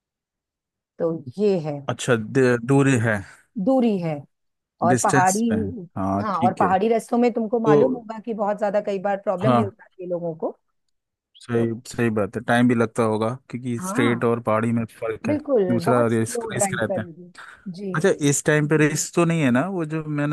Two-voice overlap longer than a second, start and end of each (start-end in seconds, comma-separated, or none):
15.3-17.1